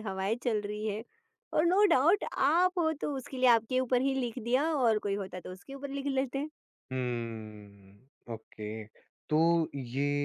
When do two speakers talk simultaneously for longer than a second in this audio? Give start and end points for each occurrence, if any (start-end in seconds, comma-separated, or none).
none